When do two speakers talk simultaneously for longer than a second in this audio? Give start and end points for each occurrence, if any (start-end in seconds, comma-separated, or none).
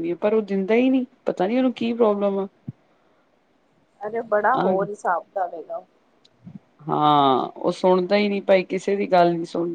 none